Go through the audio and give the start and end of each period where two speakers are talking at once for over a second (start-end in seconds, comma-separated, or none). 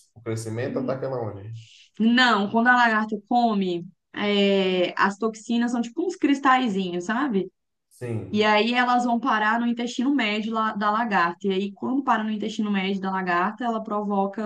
none